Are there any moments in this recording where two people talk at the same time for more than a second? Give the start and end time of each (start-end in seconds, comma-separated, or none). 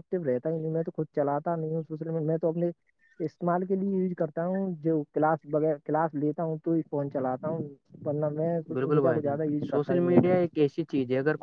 8.7-10.4